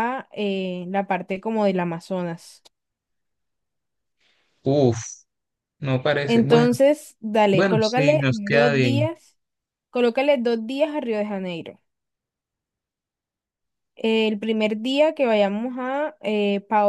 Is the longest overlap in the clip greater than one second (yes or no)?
yes